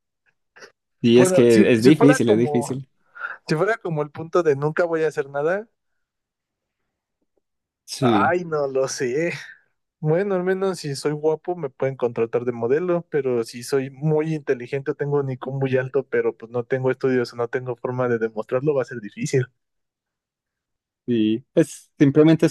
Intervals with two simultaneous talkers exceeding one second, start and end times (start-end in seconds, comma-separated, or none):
1.2-2.8